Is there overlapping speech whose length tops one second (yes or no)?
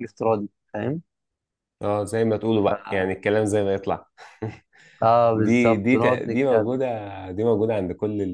yes